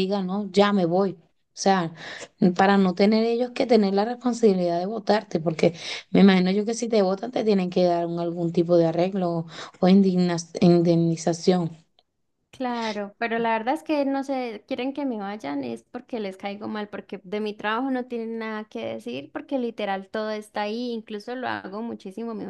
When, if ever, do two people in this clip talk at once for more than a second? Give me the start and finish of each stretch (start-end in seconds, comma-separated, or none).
none